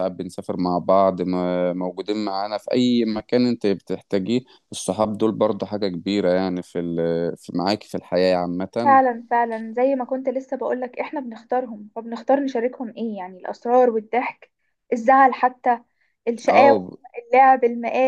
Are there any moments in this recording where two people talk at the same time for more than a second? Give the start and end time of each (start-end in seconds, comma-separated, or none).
none